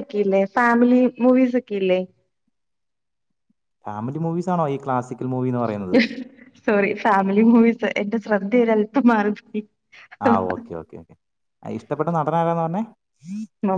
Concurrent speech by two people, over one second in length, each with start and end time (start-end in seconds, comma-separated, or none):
none